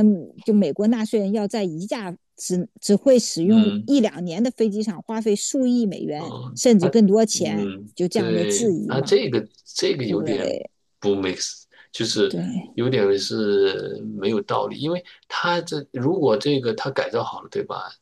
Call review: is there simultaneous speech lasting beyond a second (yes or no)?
yes